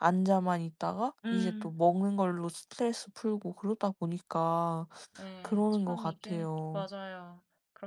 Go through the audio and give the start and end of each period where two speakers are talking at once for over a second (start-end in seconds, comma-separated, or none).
5.4-6.9